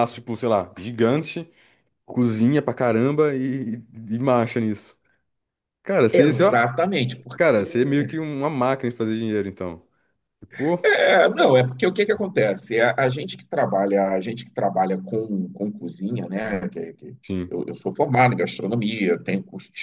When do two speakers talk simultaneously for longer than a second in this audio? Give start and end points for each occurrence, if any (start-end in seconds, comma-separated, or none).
none